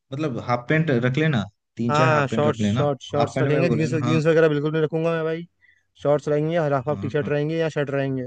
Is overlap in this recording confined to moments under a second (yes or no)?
no